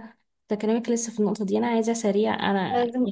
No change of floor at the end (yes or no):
yes